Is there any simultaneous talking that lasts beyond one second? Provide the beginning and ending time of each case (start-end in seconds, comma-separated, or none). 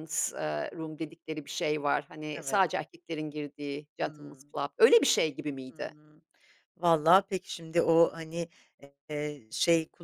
none